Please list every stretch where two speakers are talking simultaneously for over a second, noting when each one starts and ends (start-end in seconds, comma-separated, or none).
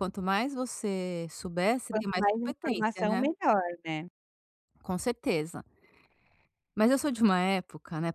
1.9-3.2